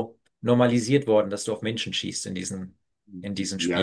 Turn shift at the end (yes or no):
yes